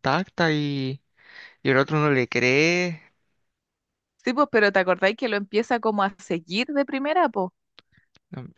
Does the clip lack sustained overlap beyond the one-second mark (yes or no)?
yes